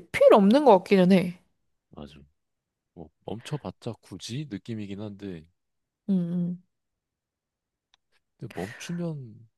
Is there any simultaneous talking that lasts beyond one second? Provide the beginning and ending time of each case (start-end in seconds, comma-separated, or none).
none